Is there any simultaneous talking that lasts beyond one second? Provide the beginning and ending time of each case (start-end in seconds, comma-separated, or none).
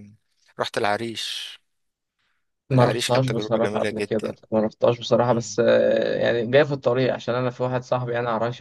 2.7-4.3